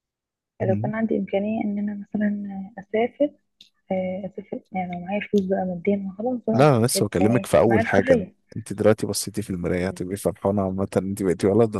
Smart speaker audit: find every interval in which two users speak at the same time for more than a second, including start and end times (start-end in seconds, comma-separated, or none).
6.5-8.3